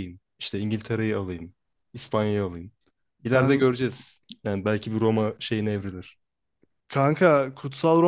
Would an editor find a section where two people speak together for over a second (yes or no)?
no